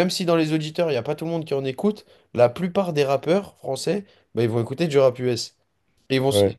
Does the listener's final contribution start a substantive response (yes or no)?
no